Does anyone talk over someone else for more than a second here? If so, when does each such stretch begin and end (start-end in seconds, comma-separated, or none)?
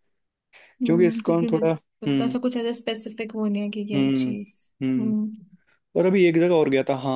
0.9-2.4